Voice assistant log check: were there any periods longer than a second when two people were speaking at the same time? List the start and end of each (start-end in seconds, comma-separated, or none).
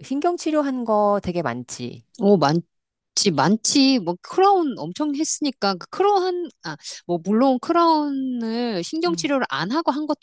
none